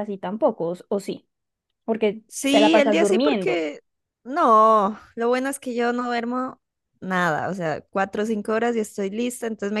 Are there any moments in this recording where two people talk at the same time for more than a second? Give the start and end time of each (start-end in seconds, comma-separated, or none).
2.3-3.6